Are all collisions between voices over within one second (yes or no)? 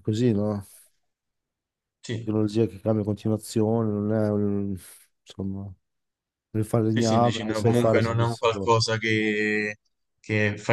no